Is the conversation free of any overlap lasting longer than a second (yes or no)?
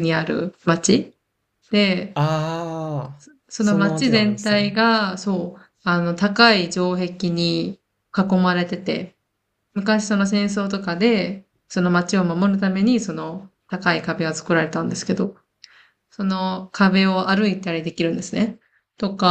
no